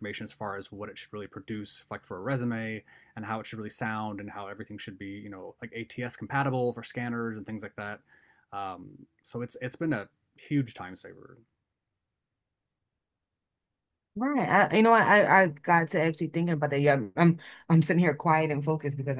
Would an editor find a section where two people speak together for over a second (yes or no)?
no